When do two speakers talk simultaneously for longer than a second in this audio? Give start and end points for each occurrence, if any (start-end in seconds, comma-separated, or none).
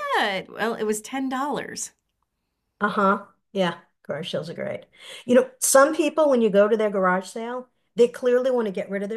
none